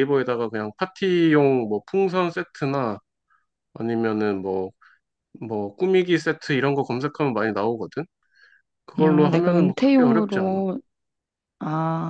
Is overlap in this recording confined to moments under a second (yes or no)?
no